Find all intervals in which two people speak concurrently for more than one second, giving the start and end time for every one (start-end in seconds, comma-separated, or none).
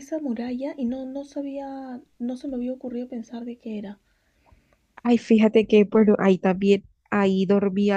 none